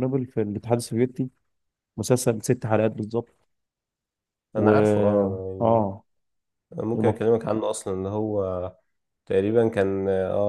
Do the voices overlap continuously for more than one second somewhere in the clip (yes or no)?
no